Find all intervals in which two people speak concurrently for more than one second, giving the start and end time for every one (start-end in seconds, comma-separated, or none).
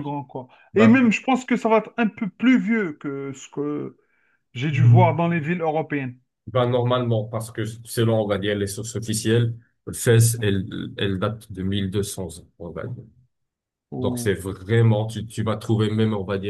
none